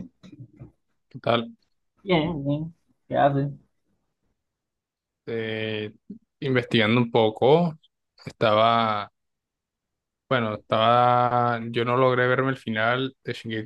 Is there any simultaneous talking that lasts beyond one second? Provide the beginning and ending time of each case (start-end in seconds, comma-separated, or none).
none